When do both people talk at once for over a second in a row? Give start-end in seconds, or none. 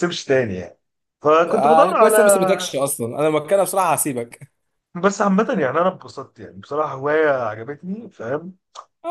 1.5-2.7